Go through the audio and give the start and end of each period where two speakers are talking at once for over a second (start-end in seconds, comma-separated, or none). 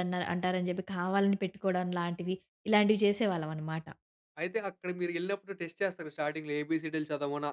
none